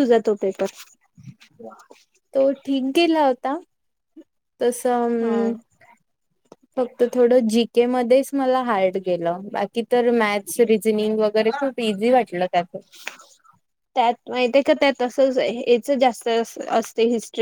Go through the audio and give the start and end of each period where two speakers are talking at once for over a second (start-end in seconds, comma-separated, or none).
none